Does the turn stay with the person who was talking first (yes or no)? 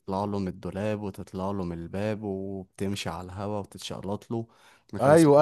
no